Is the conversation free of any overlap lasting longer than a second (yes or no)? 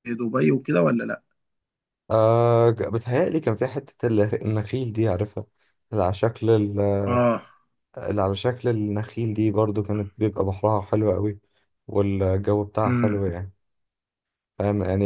yes